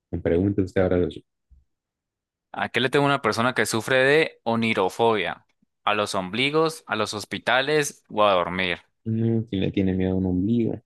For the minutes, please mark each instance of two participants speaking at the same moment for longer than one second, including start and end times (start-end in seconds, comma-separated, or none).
none